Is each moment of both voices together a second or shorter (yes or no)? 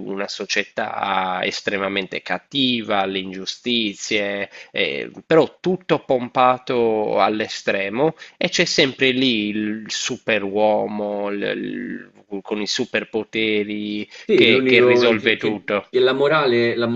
no